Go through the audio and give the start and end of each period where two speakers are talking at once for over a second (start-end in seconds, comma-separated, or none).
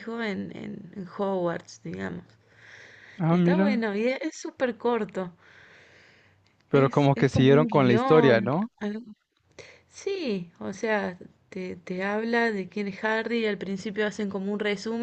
6.7-8.7